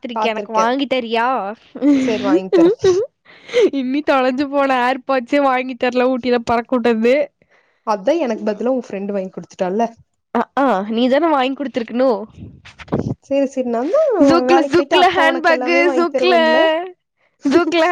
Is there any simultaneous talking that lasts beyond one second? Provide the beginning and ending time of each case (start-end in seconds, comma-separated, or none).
14.5-16.3